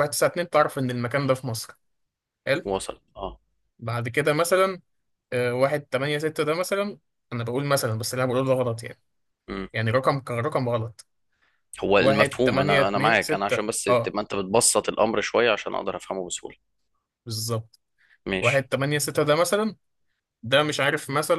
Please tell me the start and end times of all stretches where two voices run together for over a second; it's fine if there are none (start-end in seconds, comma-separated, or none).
12.0-14.2